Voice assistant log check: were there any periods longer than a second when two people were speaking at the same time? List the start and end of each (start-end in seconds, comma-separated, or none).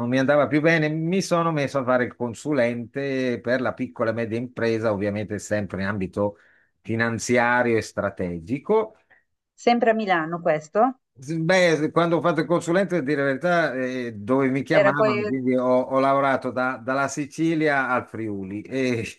none